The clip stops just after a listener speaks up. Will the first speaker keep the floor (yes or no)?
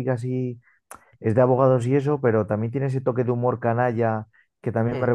yes